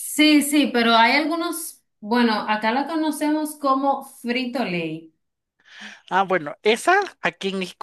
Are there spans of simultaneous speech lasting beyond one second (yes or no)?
no